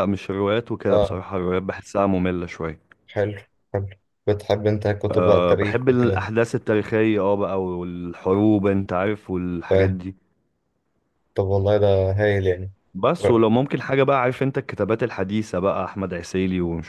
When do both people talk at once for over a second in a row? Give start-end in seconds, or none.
5.1-6.3